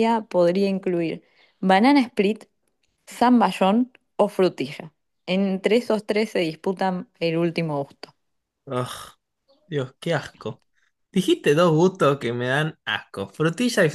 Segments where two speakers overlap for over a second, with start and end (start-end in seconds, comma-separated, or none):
none